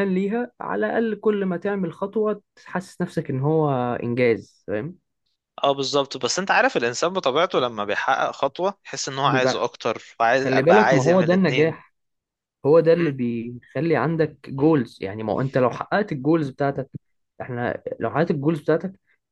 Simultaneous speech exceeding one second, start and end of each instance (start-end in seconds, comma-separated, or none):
10.4-11.8